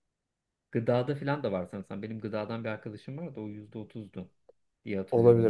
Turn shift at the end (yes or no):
yes